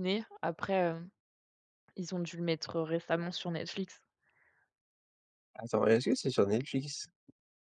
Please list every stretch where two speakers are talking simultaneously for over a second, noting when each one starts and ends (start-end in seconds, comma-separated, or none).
none